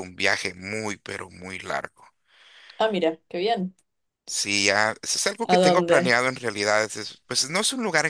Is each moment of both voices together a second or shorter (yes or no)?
yes